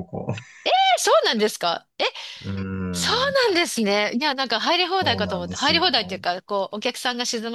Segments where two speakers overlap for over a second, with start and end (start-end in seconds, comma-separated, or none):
5.0-6.2